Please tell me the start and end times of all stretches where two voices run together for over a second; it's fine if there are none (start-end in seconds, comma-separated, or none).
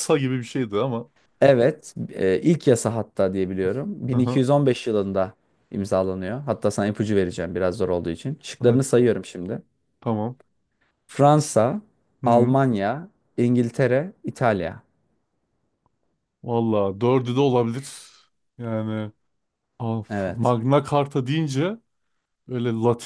none